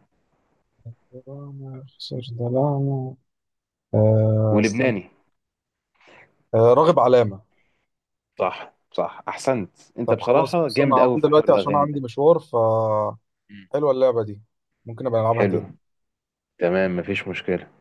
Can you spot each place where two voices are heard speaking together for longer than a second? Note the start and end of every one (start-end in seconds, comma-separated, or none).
10.1-12.1